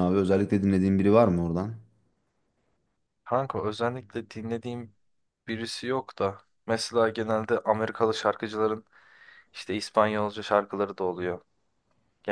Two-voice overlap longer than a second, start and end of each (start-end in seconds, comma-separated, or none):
none